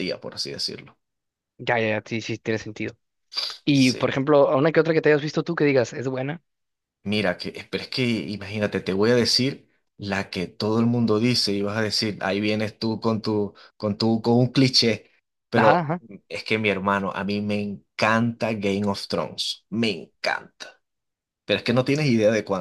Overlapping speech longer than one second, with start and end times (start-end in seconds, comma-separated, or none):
none